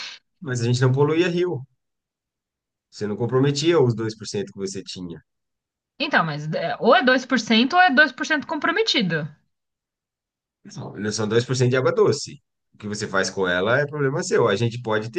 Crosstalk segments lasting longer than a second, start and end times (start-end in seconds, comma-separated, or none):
none